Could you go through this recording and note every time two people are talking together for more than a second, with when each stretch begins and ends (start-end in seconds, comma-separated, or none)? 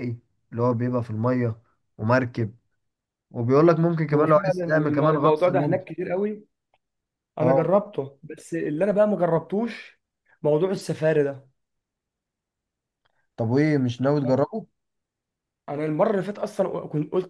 4.1-5.9